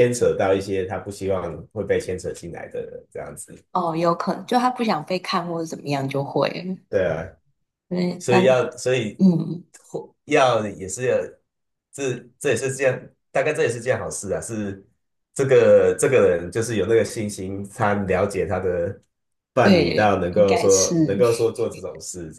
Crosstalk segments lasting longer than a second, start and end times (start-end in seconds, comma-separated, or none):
19.6-20.9